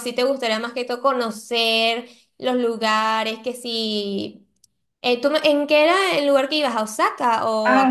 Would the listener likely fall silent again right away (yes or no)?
no